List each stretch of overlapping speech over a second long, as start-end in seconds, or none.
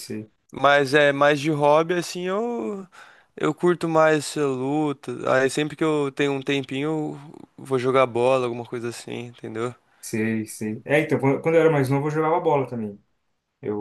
none